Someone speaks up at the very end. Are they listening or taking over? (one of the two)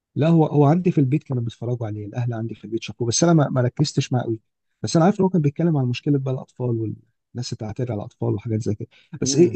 listening